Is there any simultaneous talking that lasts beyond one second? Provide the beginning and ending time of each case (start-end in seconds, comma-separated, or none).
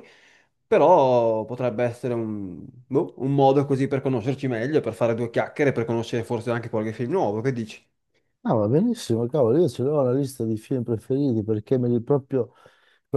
none